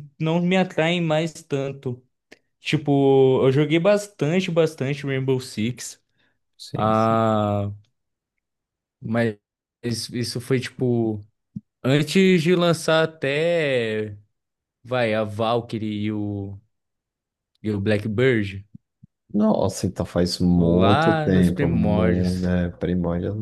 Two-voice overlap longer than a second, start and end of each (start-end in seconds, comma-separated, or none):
20.5-22.5